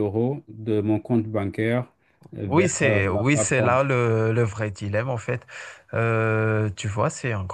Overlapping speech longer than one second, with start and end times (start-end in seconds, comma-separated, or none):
2.4-3.8